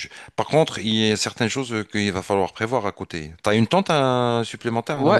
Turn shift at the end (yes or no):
yes